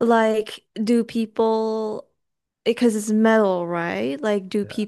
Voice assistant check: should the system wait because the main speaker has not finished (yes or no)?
yes